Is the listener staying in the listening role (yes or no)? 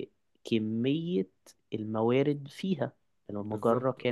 yes